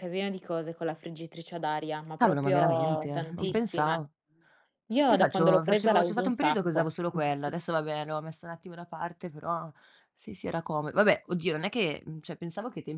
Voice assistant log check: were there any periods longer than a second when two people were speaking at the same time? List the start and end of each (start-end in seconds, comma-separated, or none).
2.2-4.0, 5.1-6.9